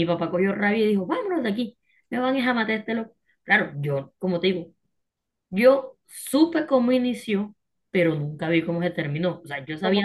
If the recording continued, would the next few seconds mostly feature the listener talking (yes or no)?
yes